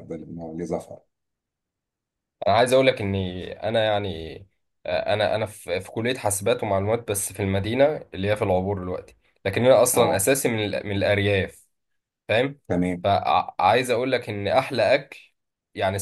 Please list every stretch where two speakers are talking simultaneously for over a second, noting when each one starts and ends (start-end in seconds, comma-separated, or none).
none